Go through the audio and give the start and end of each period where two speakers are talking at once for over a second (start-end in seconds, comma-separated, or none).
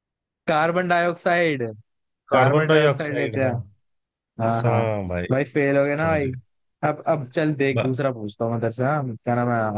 2.3-3.5